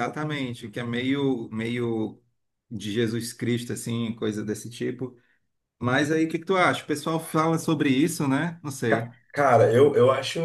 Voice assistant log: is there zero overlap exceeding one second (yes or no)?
yes